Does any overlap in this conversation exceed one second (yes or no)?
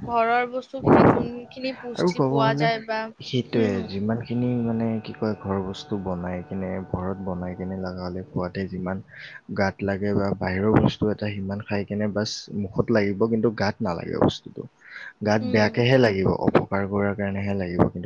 no